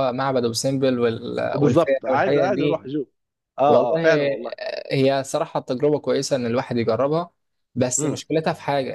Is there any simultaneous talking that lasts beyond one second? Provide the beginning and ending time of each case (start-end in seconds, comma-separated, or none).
1.5-2.9